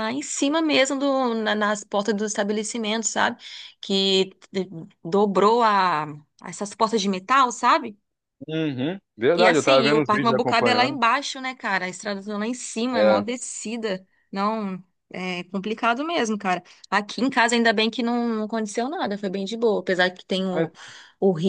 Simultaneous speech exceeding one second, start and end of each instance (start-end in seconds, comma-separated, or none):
9.3-11.0